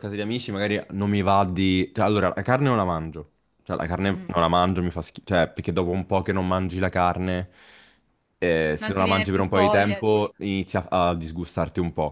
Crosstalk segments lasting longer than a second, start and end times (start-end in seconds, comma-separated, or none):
8.8-10.3